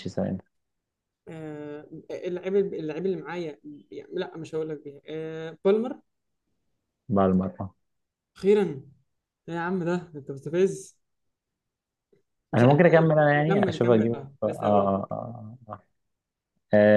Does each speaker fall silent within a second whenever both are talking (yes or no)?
no